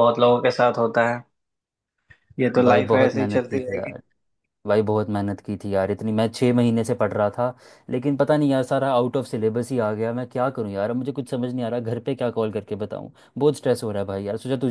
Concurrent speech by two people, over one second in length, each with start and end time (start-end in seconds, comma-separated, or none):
2.6-4.0